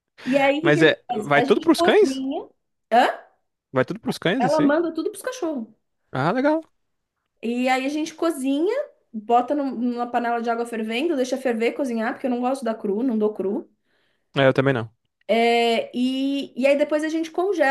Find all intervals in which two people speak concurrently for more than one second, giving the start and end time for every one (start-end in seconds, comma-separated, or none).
0.6-2.2